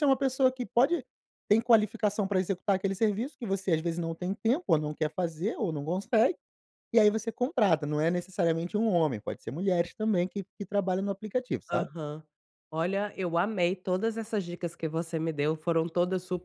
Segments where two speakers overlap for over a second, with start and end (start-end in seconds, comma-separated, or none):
none